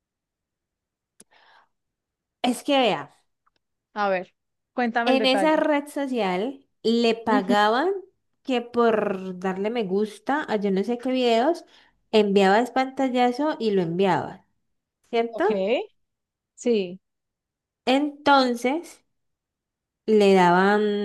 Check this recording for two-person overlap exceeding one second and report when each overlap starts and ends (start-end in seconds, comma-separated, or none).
none